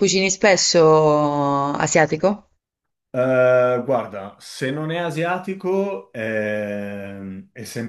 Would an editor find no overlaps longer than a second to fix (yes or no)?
yes